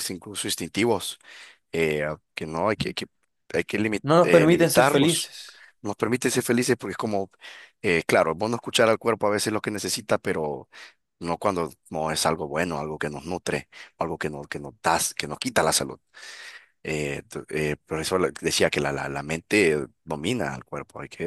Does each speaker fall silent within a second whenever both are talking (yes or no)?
no